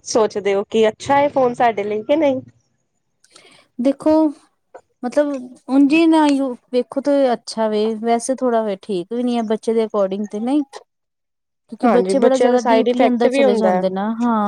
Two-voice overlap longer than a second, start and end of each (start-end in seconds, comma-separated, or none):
11.8-13.8